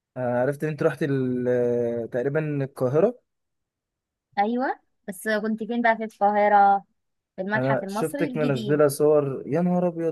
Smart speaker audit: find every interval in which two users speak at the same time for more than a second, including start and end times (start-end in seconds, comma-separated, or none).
7.5-8.8